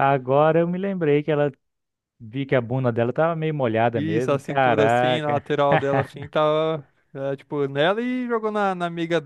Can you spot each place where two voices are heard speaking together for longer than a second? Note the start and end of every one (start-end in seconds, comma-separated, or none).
4.0-5.4